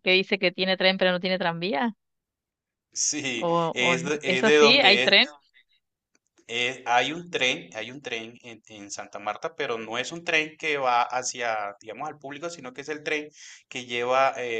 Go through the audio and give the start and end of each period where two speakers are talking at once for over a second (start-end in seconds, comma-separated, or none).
3.4-5.2